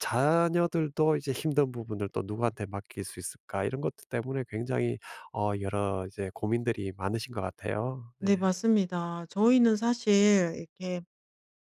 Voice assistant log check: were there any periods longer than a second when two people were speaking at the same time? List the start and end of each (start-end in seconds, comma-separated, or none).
none